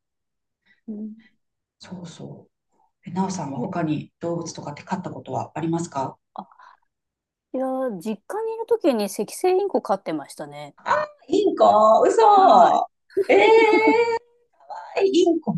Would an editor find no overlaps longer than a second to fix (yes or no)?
yes